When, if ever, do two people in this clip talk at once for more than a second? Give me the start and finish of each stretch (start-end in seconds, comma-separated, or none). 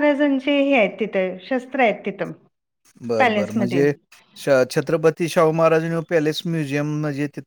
none